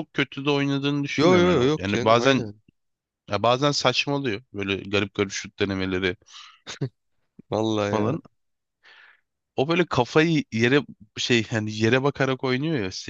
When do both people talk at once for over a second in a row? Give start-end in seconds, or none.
1.2-2.5